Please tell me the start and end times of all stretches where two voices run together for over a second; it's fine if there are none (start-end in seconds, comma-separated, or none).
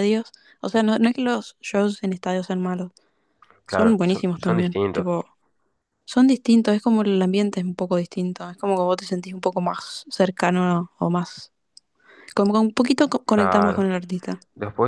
3.7-5.1